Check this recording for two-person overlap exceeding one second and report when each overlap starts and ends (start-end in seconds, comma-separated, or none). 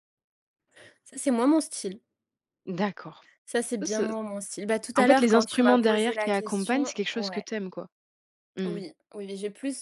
5.0-7.5